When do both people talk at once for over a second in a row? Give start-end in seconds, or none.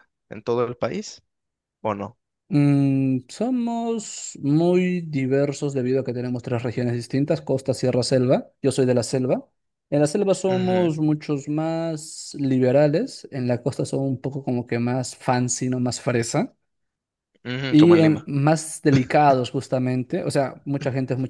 none